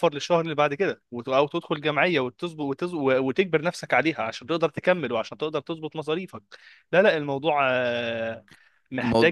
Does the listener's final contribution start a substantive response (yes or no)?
no